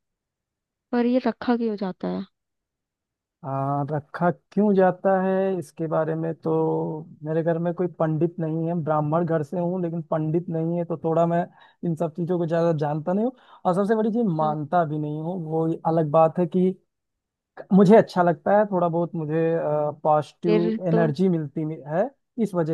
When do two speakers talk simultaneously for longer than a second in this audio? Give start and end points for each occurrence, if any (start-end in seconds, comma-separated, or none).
none